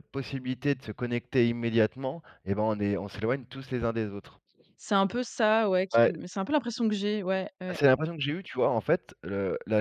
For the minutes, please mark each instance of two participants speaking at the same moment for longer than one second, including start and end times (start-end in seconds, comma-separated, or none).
none